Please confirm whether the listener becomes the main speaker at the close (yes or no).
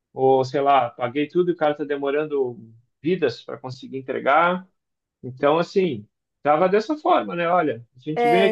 no